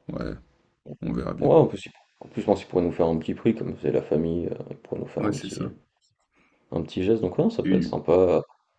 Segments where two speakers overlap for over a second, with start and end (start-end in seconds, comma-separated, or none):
none